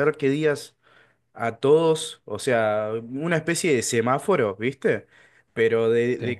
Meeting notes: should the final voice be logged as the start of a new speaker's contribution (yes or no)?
no